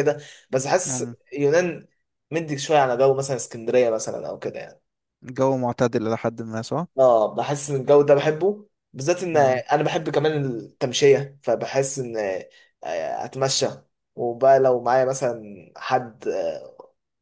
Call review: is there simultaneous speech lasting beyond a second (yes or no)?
no